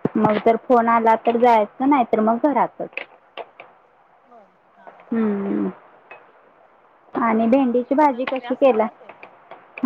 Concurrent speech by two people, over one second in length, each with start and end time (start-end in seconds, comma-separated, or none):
7.4-8.8